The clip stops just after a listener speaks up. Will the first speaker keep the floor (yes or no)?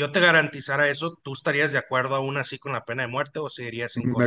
no